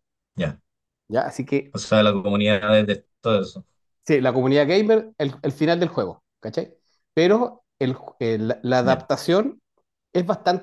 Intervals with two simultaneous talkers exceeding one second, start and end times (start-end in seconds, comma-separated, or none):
none